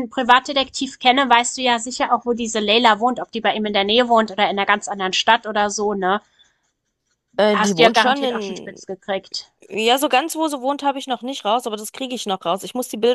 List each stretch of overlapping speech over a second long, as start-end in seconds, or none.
7.5-8.8